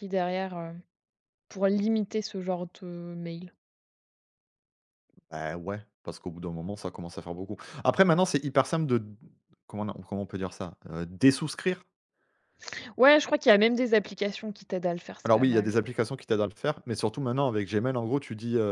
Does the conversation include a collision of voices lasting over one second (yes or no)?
no